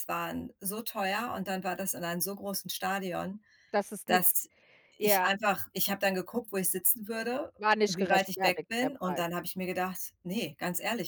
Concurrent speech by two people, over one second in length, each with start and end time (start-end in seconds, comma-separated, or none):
7.6-9.3